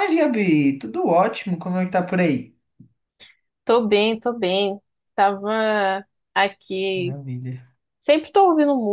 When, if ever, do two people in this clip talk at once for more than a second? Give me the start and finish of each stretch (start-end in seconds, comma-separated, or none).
none